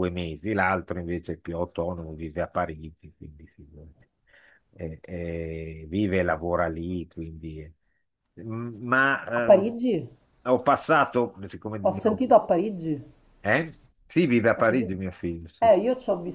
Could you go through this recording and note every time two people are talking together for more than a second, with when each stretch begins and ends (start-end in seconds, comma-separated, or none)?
none